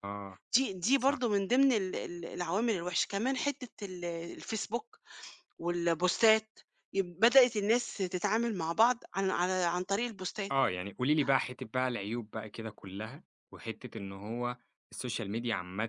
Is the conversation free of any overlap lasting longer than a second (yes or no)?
yes